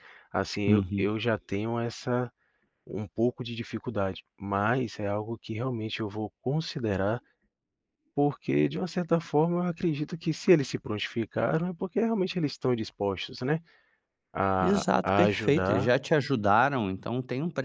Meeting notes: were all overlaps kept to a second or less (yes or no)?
no